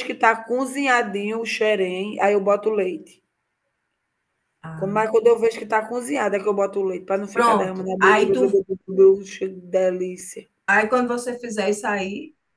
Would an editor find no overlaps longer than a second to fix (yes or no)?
no